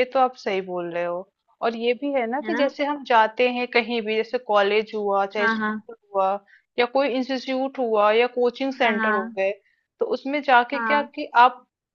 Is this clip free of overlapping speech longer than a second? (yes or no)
yes